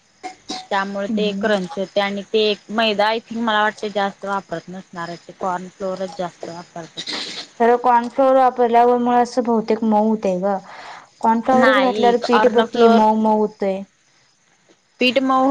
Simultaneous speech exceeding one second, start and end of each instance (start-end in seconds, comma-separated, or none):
11.6-13.0